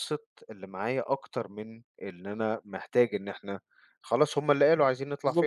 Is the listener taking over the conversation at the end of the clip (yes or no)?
yes